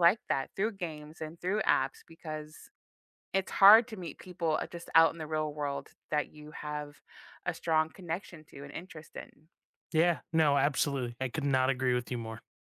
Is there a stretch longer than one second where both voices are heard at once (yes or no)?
no